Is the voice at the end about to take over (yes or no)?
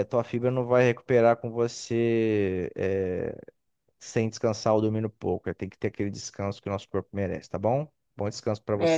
yes